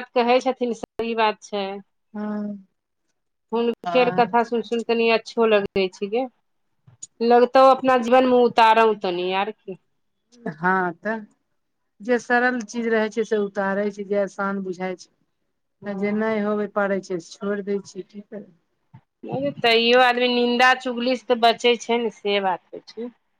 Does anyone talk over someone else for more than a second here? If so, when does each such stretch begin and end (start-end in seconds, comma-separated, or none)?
none